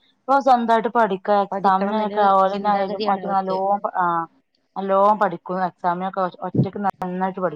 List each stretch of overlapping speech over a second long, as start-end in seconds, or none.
1.5-3.5